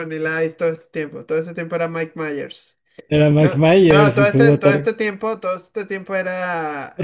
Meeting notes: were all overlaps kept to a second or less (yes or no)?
no